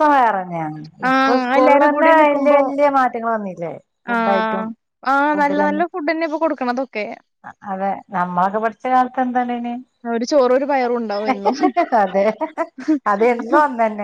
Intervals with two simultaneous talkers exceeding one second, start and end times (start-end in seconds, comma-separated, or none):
1.1-2.6